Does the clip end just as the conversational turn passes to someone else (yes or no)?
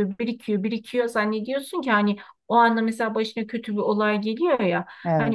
no